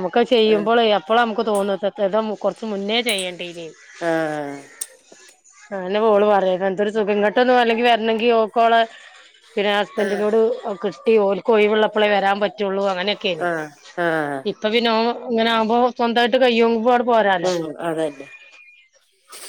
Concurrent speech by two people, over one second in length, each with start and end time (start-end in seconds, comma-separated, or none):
none